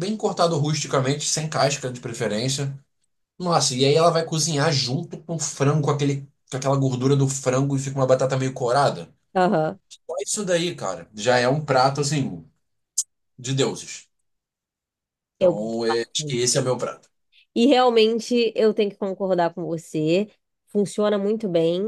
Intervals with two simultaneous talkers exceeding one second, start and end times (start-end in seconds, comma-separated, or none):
15.4-16.6